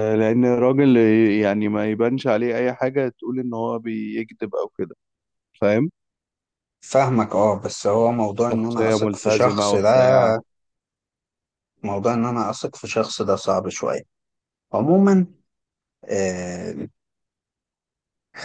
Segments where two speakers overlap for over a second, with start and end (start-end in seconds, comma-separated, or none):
8.5-9.9